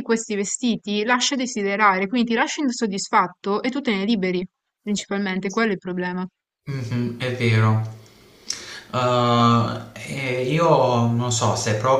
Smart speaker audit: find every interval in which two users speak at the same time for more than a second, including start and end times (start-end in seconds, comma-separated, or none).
none